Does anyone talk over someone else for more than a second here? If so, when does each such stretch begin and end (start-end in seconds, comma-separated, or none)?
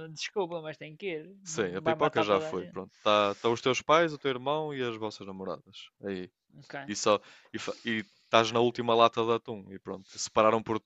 1.4-2.8